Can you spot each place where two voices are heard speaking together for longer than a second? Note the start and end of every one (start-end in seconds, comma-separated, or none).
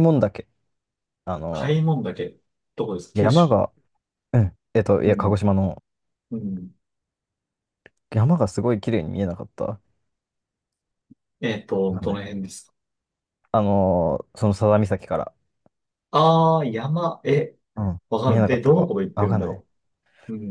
18.1-19.6